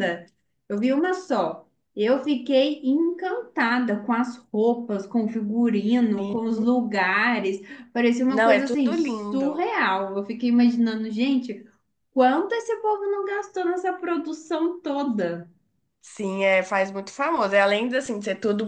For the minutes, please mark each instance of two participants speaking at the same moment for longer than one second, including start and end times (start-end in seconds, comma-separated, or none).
8.3-9.7